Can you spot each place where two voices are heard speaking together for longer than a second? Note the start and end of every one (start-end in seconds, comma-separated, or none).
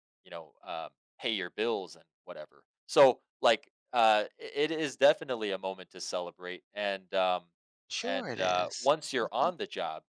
8.0-9.5